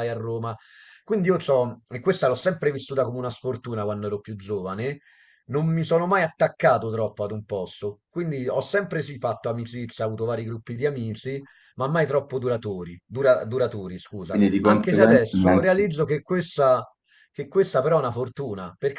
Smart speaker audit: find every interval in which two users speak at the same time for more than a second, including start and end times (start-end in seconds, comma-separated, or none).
14.3-15.8